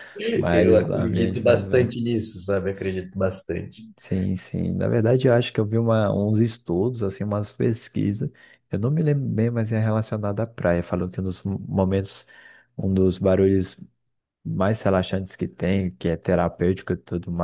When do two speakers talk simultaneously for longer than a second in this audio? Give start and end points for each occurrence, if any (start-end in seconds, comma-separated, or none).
0.5-1.9